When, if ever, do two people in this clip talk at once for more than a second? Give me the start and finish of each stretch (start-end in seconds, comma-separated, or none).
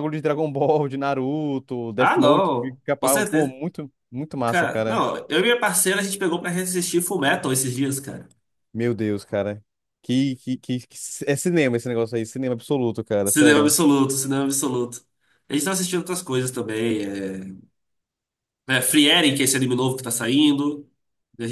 2.0-3.6